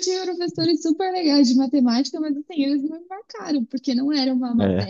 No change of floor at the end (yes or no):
yes